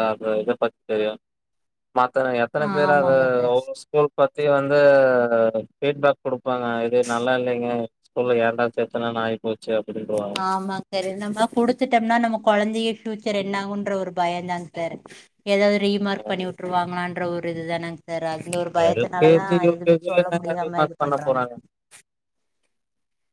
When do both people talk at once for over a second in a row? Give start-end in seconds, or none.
18.9-21.4